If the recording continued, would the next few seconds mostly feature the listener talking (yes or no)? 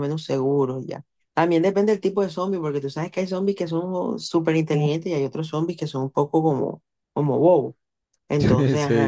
yes